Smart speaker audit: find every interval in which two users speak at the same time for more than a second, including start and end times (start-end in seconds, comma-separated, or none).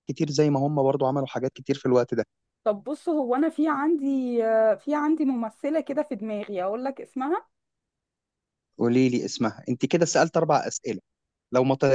none